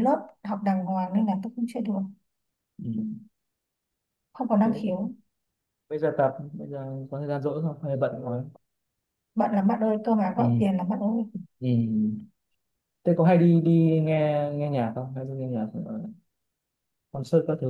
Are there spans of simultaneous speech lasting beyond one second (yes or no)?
no